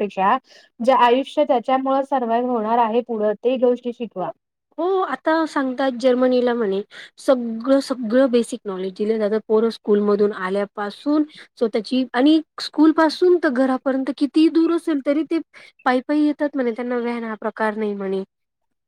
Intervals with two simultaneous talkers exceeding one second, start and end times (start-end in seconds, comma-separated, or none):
none